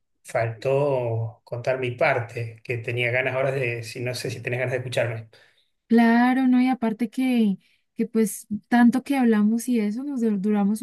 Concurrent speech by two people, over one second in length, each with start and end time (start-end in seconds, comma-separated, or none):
none